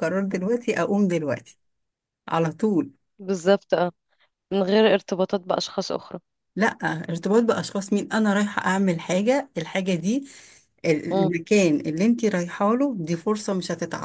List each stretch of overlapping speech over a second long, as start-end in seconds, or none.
none